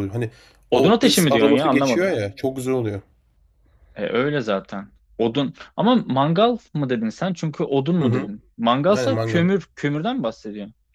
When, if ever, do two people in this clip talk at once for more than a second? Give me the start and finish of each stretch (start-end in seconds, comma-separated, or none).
0.7-2.1